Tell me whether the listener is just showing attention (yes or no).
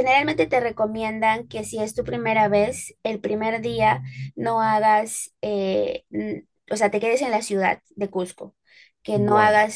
yes